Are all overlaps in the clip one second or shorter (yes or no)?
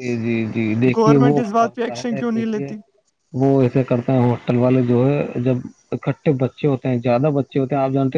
no